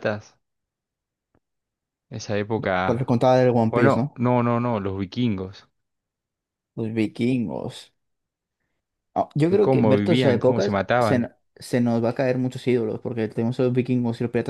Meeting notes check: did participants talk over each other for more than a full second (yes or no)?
yes